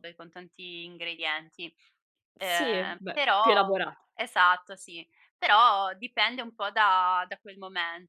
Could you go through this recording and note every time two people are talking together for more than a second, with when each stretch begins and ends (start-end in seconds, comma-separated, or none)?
2.4-3.8